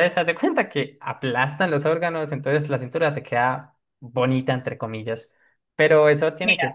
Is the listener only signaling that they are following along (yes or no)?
yes